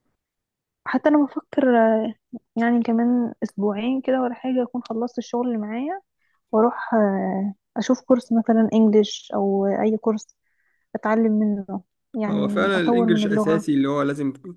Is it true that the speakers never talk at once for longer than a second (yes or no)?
no